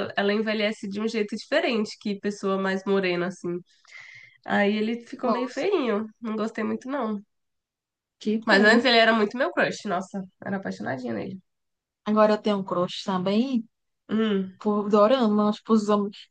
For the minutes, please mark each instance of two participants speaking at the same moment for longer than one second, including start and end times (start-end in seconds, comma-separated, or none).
none